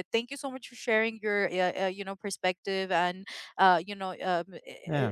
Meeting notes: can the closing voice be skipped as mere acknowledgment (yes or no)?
yes